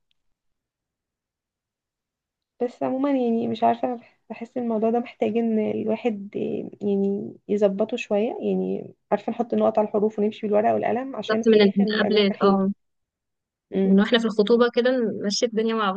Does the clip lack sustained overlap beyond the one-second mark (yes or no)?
no